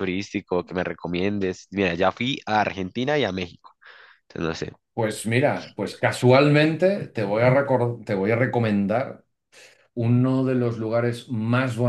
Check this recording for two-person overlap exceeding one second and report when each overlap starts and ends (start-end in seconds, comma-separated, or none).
none